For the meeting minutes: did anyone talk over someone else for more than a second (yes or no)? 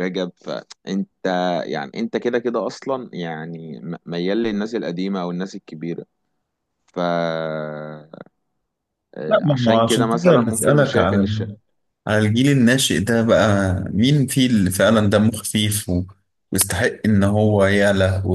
yes